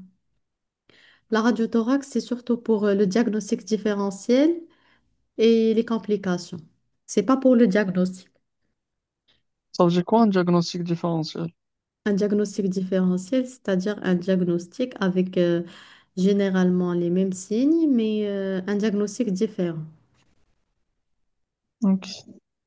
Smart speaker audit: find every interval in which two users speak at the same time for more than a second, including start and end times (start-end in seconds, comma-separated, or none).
none